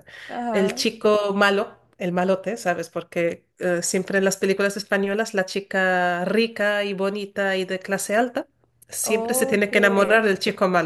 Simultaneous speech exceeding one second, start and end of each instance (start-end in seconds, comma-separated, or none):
9.0-10.3